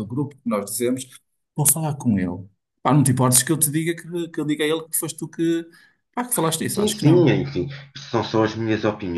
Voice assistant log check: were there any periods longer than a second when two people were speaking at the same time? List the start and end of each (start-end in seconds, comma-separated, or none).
none